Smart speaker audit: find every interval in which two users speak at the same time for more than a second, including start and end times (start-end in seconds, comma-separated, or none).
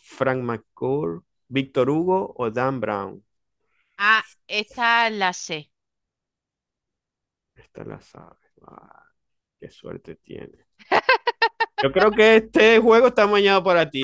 none